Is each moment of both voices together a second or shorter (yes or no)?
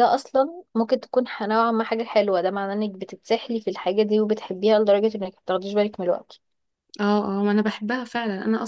yes